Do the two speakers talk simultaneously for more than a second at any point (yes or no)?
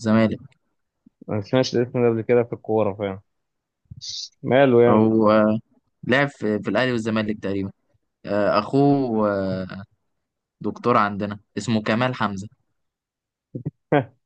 no